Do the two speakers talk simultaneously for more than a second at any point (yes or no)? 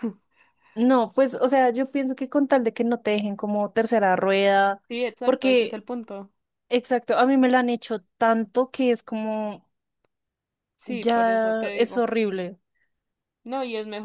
yes